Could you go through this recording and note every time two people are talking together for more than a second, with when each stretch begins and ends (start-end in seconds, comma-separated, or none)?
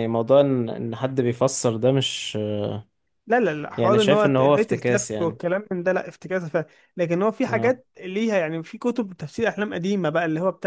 3.8-5.4